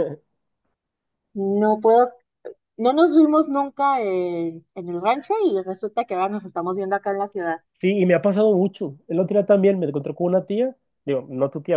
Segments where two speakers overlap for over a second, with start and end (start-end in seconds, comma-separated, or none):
none